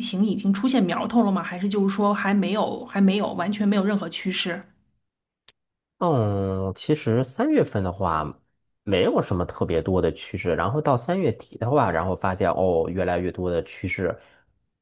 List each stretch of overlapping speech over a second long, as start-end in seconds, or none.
none